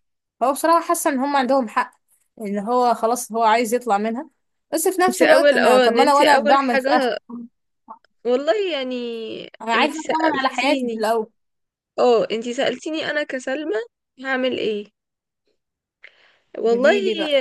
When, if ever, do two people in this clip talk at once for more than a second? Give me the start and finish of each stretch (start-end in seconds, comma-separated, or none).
5.1-7.1, 9.8-11.1